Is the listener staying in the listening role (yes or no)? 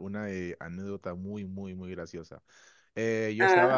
yes